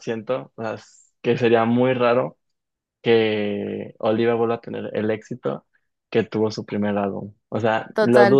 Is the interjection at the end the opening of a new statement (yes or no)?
no